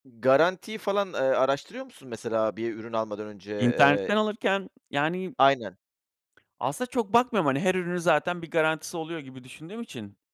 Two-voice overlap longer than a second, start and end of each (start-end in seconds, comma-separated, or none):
none